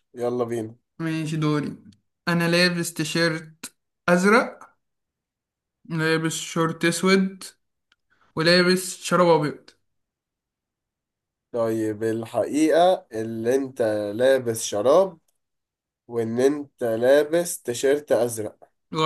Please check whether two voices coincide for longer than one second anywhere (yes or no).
no